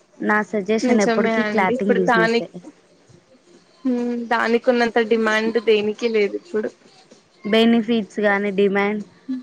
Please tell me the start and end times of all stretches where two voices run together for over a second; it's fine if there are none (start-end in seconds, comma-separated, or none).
0.9-2.5